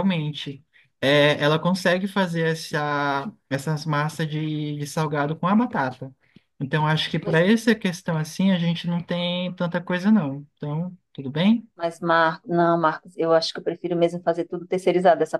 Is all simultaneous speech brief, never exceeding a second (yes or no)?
yes